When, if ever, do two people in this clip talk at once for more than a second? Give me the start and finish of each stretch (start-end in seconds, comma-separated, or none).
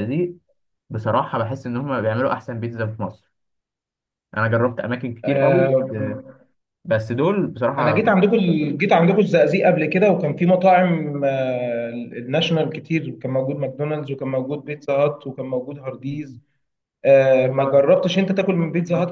none